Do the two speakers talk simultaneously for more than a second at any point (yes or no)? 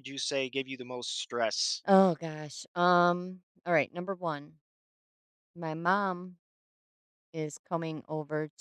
no